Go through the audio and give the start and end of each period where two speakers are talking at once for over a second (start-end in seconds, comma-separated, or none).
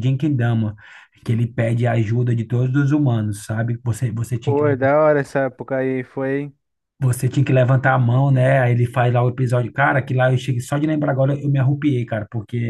none